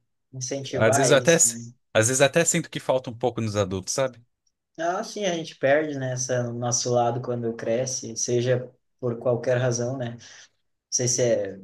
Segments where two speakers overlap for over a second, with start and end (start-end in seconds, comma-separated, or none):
none